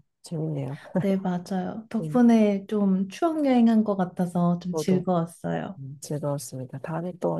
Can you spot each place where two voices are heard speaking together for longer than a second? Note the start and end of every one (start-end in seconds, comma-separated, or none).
none